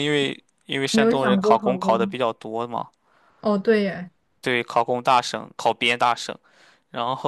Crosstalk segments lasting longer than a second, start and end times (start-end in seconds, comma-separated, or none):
0.9-2.1